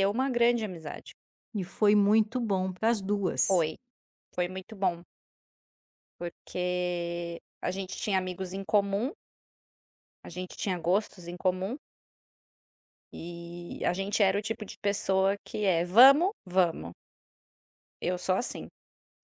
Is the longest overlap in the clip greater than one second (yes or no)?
no